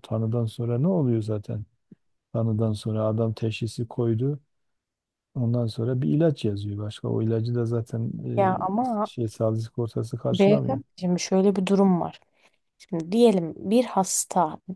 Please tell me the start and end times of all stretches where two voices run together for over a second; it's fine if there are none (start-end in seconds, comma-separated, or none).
none